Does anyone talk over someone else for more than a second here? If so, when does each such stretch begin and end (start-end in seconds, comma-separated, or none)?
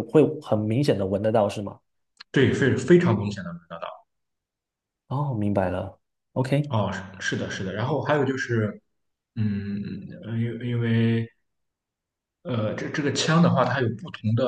none